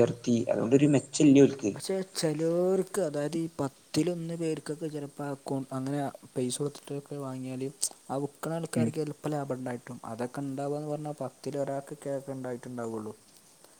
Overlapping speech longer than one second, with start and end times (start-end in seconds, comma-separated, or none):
none